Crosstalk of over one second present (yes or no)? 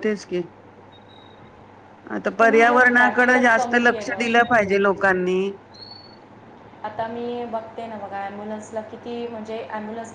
yes